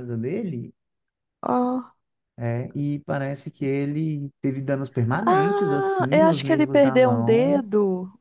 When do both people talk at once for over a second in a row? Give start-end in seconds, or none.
5.3-7.6